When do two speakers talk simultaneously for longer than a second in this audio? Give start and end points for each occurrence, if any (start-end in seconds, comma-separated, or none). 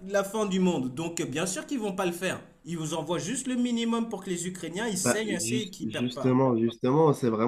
5.0-6.4